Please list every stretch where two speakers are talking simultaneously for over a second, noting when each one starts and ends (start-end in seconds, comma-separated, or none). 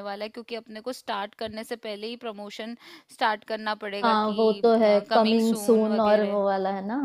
5.1-6.4